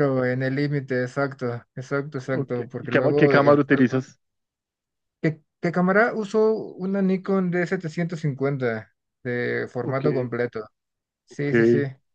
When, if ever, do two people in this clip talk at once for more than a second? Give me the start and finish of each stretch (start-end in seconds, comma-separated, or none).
2.3-4.0